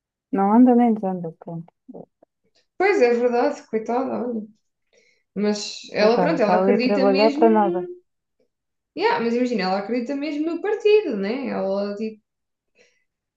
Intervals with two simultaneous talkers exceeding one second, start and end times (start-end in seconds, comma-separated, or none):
6.0-7.5